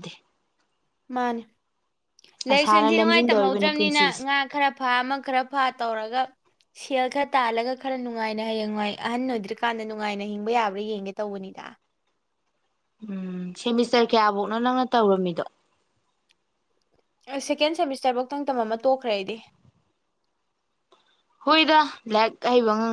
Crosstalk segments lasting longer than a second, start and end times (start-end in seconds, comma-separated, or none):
2.5-4.2